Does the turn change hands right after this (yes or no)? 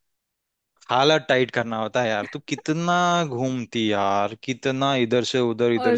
yes